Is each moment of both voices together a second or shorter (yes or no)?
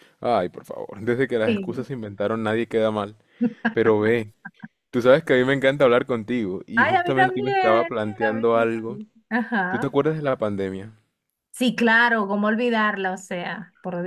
no